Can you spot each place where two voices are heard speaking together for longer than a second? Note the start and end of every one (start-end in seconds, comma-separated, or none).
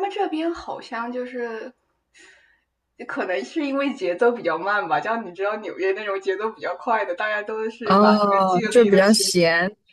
7.8-9.4